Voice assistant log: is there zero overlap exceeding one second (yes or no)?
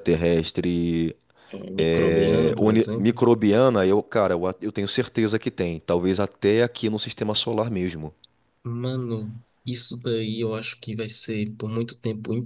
no